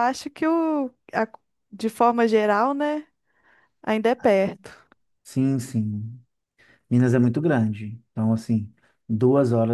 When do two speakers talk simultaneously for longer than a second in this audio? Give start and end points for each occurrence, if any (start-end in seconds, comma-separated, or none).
none